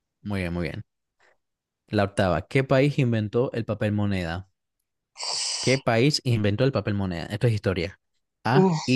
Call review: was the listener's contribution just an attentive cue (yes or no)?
yes